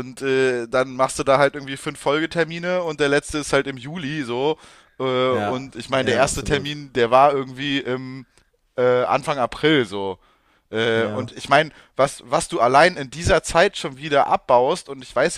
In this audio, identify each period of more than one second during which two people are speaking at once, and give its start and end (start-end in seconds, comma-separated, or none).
5.3-6.8